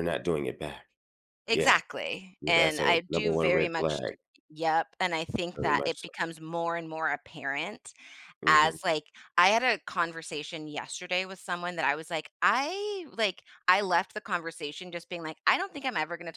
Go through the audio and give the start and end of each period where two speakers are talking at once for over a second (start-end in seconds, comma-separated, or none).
2.4-4.0